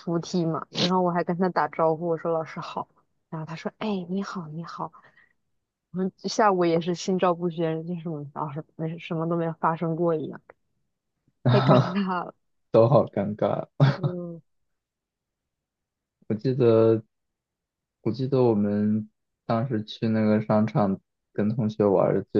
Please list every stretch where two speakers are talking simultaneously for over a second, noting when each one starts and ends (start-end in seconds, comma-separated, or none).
none